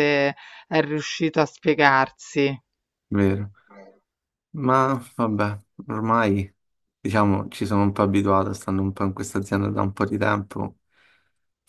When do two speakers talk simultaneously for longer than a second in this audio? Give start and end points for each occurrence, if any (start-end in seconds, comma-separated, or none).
none